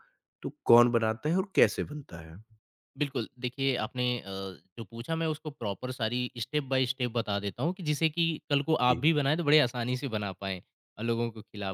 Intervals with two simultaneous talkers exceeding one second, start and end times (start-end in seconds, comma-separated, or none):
none